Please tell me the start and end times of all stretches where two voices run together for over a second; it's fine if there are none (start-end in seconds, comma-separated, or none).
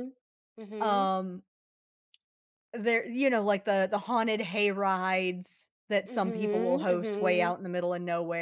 6.0-7.5